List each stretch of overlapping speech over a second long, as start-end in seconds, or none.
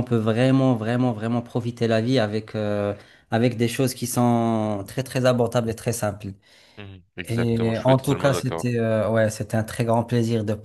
7.2-8.7